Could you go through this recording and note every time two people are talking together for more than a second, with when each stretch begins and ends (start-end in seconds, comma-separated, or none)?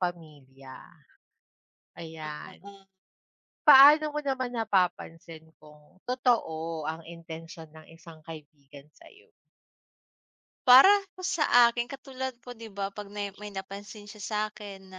none